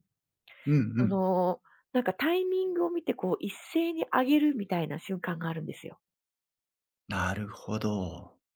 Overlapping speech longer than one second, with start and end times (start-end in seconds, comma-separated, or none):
none